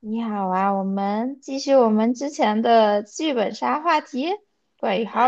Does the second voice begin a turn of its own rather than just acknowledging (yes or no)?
yes